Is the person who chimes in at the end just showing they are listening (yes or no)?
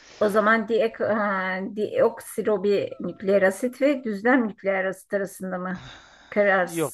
no